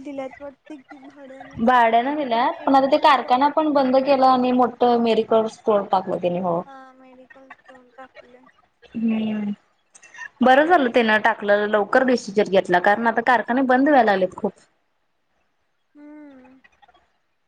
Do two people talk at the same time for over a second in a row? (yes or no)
yes